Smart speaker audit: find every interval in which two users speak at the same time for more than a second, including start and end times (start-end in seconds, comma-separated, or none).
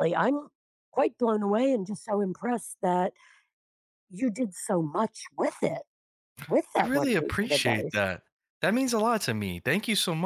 6.8-8.0